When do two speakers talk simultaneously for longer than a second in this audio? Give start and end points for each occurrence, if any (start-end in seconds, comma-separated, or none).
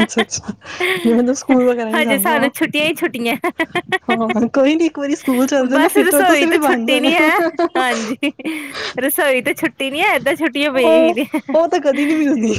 5.7-7.1